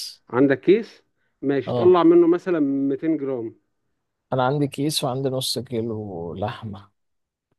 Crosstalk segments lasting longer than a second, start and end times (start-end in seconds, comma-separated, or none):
none